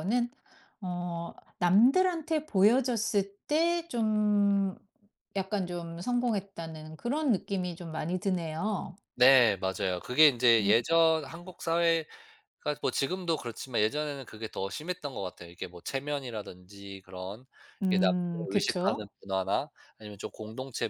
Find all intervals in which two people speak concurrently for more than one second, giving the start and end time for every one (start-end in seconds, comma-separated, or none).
17.9-19.1